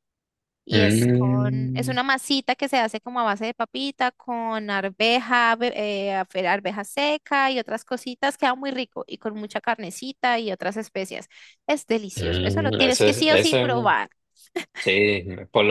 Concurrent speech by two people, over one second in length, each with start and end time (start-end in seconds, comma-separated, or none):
0.7-2.0, 12.1-13.9